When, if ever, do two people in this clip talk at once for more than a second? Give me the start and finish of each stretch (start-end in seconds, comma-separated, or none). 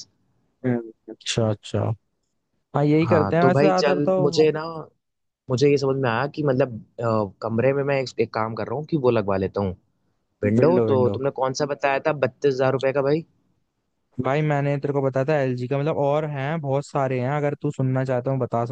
3.0-4.5